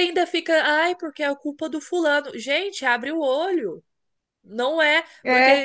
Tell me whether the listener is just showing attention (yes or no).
yes